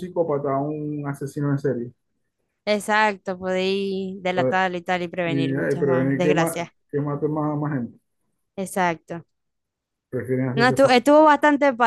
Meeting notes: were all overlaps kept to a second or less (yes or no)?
no